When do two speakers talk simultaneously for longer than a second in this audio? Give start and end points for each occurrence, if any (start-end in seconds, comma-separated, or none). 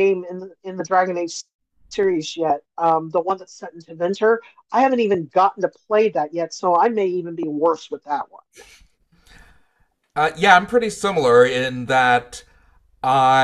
none